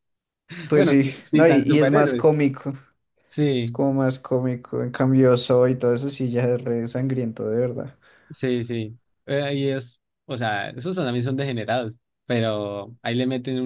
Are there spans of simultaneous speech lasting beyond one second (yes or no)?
yes